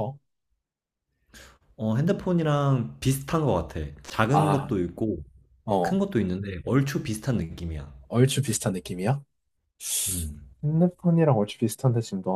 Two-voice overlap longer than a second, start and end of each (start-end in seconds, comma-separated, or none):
none